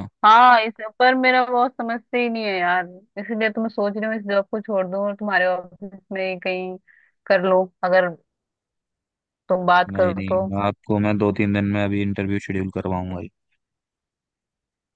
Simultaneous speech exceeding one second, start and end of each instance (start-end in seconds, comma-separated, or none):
none